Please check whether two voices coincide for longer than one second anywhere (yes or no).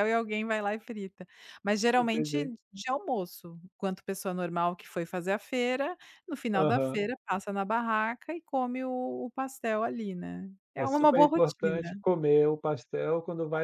yes